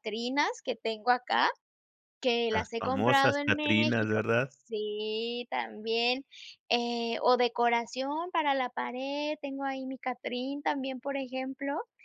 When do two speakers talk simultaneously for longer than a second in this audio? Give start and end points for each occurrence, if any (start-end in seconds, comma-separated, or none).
2.5-4.5